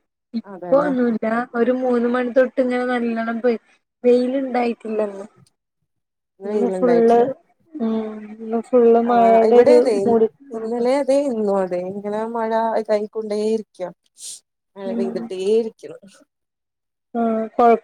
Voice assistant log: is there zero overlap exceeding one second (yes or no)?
yes